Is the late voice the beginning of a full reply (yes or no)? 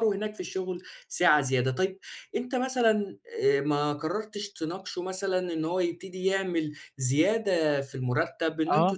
no